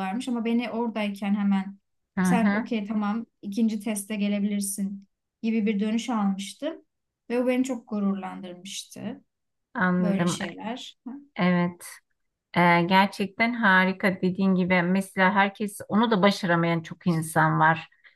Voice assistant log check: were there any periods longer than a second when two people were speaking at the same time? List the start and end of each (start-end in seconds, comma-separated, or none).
none